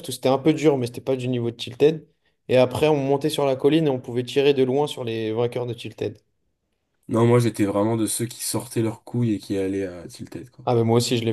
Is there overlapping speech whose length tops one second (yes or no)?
no